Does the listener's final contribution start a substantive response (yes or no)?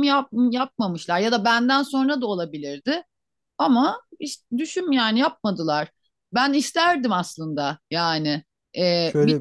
no